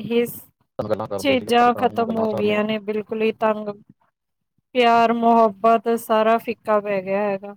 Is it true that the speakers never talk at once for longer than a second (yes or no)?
no